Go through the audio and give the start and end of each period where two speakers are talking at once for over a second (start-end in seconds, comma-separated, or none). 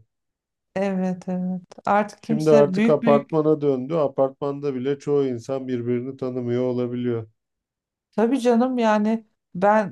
2.2-3.4